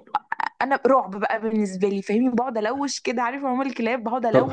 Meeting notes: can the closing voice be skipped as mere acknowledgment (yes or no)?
yes